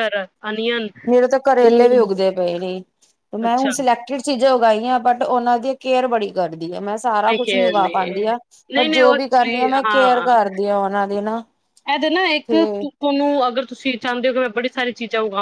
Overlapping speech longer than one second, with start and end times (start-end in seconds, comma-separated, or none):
8.8-10.3